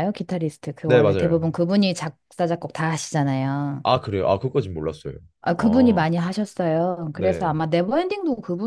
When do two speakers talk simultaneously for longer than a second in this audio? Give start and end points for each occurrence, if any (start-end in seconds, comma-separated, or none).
none